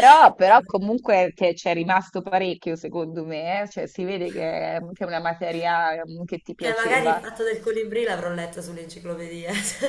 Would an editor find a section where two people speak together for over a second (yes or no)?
no